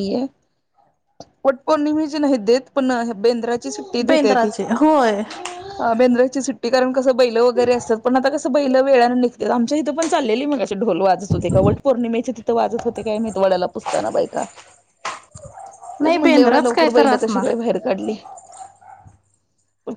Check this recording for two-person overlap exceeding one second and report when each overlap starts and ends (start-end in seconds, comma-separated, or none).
16.0-17.5